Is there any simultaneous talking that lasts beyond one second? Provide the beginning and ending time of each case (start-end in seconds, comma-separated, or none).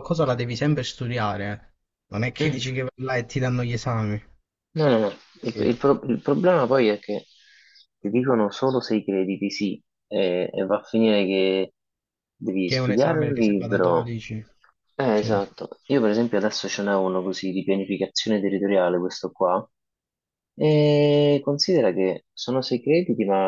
12.6-14.1